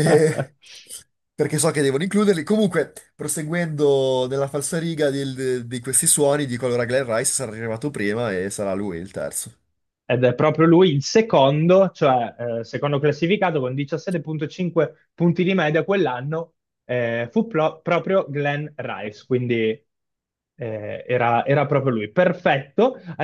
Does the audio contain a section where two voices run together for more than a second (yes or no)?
no